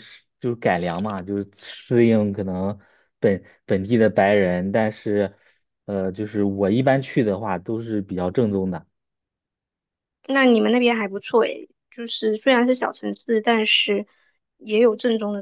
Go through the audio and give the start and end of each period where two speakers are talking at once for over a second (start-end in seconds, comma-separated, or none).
none